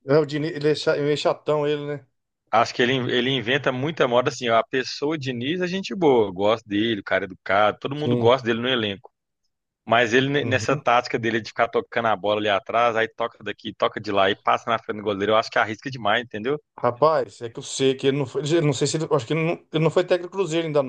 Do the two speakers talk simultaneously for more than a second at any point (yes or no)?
no